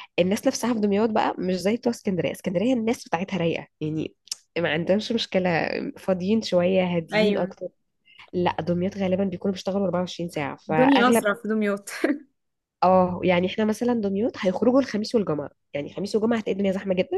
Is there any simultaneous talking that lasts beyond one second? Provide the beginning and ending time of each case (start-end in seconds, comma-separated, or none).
none